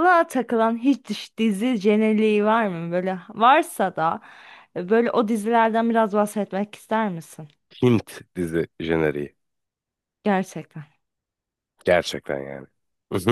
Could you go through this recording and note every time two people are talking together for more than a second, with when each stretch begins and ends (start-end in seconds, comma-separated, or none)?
none